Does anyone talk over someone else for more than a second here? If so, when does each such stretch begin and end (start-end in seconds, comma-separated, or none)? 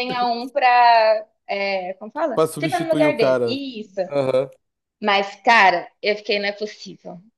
2.3-3.6